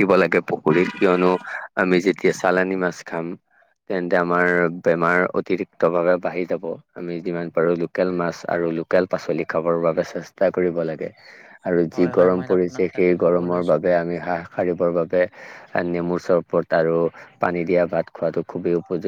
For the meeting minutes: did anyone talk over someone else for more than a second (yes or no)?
yes